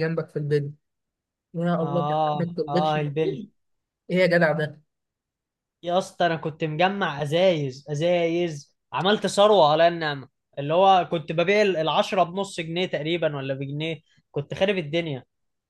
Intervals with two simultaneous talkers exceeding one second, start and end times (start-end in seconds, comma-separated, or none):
1.8-3.4